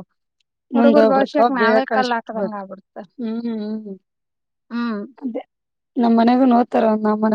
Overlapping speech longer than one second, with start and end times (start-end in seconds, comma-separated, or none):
0.8-2.6